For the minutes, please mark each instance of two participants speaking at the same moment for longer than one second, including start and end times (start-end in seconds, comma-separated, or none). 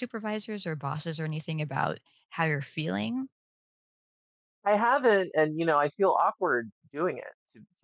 none